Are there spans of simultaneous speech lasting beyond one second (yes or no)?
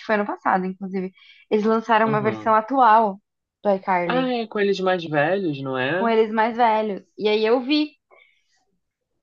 no